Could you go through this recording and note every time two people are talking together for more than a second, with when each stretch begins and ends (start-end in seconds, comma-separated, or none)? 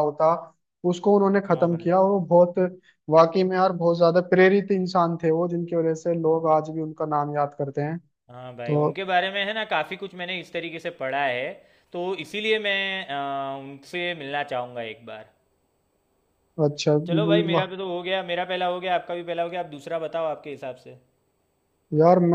none